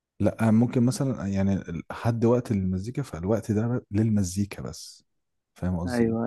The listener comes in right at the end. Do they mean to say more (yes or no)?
yes